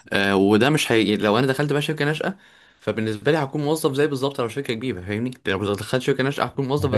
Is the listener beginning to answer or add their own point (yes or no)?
yes